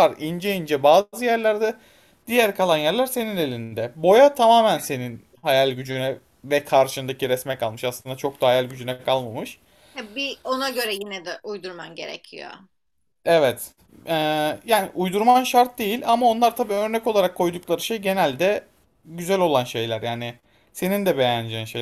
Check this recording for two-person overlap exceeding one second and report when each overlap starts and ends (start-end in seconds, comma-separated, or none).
none